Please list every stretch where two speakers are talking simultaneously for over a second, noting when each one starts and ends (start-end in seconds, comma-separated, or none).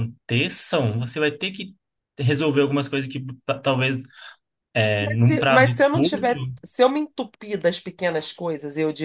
5.0-6.2